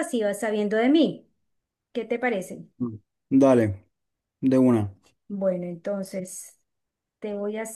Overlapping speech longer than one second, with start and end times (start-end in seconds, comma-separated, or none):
none